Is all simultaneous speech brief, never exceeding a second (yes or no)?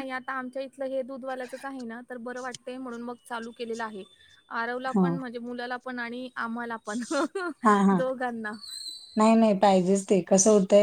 yes